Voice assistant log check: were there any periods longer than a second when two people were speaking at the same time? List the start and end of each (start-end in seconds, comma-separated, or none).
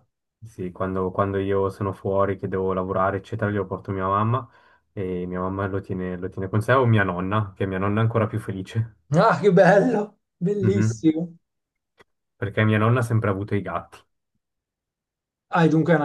none